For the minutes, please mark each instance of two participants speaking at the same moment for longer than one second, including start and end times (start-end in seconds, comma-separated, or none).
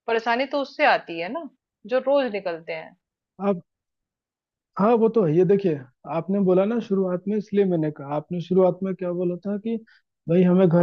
none